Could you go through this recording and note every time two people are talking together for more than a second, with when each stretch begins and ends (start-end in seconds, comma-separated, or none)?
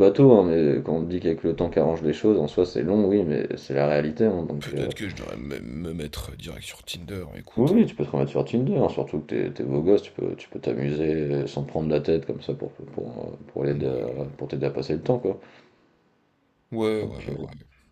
none